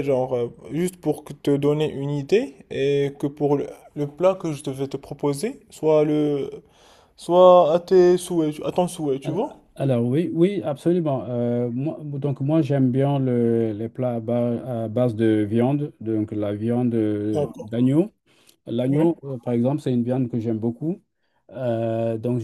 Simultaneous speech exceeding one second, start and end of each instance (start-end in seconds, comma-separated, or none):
none